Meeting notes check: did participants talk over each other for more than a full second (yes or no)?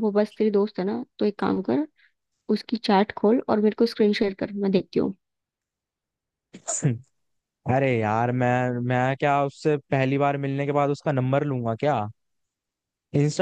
no